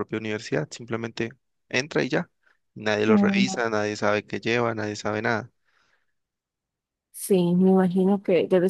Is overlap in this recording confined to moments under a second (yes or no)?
yes